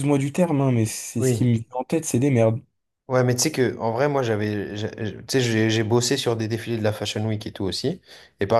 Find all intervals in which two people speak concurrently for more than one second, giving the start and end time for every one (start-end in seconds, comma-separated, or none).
none